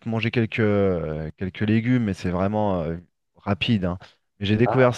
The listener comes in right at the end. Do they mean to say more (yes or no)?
no